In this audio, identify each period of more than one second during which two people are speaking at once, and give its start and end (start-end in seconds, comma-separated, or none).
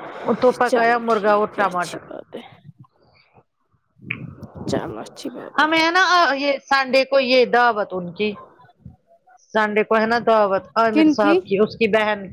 0.7-2.0